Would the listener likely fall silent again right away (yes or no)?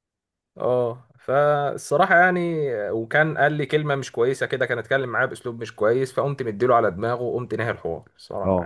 no